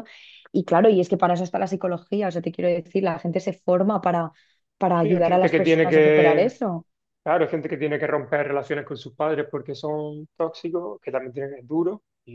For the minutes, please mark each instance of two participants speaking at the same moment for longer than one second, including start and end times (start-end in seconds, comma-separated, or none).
4.9-6.6